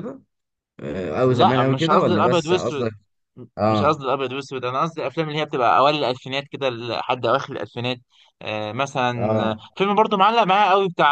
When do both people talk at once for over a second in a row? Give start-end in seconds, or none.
1.2-2.9